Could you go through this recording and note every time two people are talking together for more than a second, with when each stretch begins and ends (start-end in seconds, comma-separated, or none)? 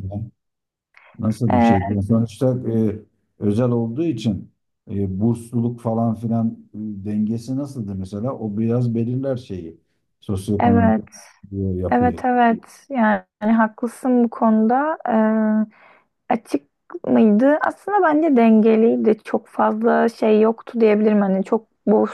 none